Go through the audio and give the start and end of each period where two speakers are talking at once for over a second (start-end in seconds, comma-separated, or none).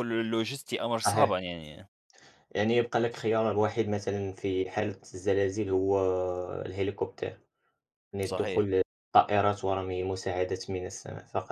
none